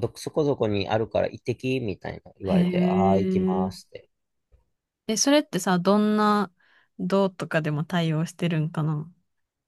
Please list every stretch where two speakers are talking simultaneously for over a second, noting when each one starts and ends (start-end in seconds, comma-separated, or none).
2.5-3.9